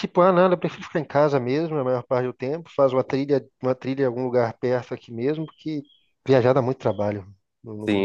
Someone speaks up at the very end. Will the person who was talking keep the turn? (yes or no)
no